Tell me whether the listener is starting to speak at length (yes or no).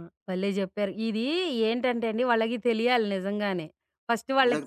no